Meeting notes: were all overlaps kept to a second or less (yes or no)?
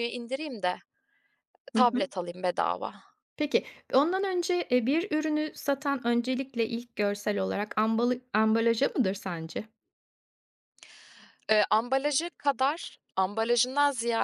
yes